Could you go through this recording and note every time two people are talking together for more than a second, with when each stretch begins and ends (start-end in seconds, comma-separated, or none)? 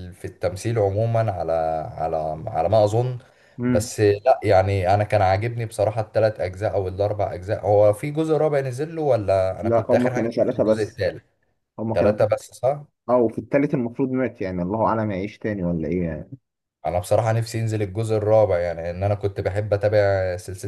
9.6-11.0